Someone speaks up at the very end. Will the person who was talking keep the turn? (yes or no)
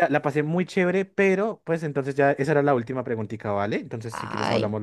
no